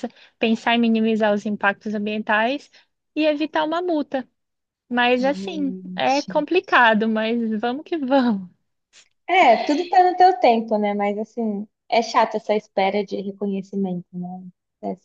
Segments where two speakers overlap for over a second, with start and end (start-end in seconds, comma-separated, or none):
5.2-6.5